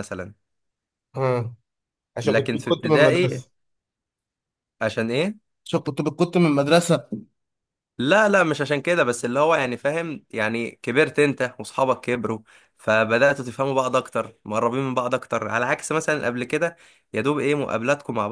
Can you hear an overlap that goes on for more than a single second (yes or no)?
yes